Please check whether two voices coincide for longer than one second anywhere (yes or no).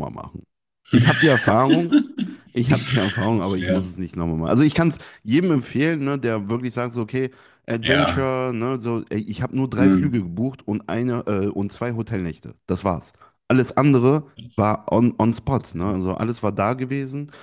no